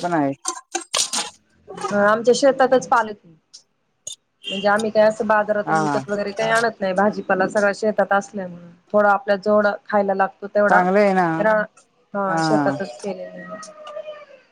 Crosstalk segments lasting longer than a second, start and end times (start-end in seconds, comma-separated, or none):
none